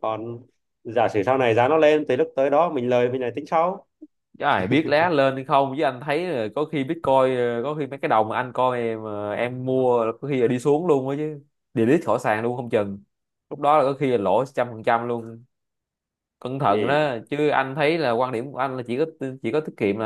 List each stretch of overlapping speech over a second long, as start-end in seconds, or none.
none